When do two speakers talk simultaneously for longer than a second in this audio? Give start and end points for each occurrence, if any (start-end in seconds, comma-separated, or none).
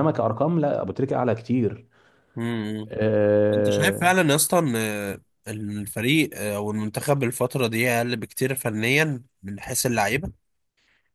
none